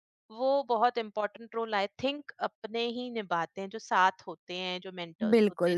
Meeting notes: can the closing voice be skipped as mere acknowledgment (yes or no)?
no